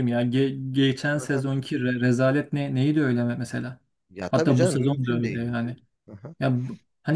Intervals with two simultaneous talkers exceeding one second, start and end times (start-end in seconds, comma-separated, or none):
4.3-5.6